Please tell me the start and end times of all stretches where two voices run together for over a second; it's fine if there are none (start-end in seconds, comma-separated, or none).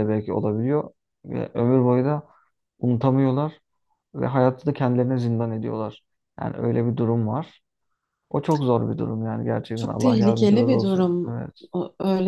9.8-11.7